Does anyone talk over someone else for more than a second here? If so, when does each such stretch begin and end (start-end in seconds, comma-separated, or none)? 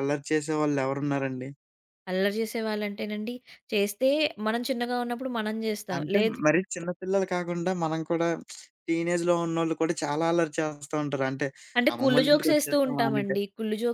11.9-13.3